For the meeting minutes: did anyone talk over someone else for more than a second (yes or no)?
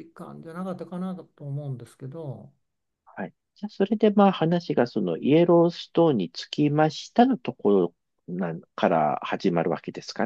no